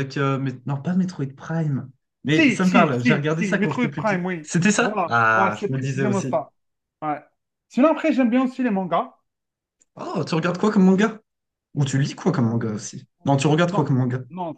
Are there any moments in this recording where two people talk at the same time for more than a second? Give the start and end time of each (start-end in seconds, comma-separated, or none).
2.3-6.4